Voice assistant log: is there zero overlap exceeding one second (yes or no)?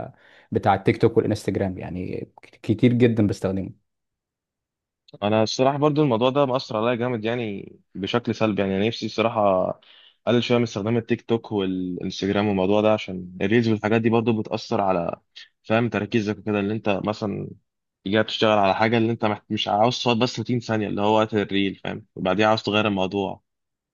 yes